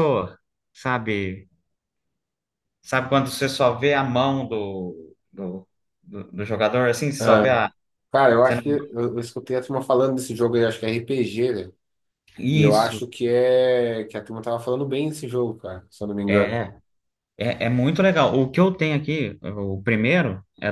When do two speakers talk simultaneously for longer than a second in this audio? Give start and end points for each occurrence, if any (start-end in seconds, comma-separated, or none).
none